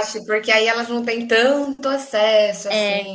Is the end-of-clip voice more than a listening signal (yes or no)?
yes